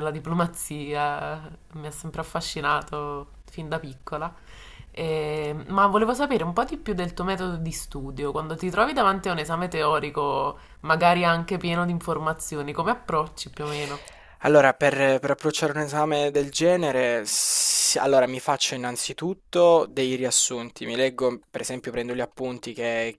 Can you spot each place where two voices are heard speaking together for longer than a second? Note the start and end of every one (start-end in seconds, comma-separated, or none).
none